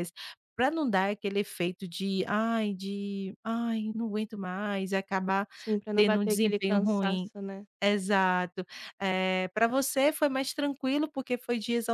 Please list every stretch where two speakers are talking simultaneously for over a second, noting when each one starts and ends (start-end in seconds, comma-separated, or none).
5.9-7.3